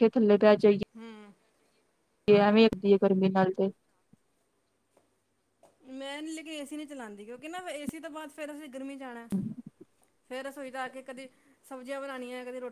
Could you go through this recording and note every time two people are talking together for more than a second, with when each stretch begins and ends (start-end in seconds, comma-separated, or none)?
none